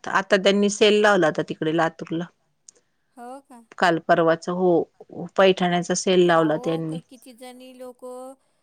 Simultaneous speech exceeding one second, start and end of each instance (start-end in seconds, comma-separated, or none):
none